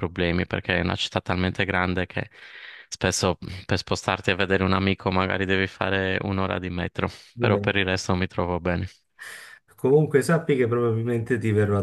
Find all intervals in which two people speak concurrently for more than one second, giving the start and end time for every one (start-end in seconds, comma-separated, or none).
none